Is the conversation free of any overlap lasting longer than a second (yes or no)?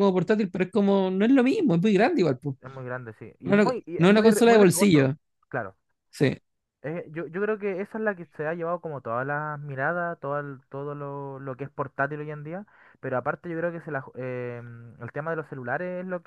no